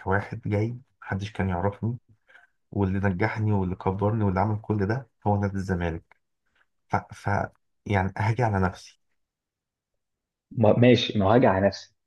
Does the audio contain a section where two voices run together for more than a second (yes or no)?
no